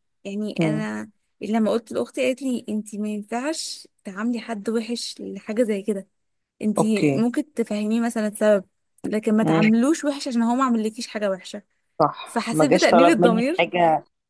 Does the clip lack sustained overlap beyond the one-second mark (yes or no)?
no